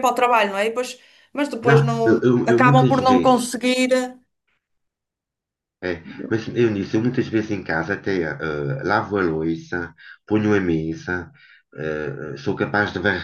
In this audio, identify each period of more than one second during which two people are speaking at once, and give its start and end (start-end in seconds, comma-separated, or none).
1.6-3.4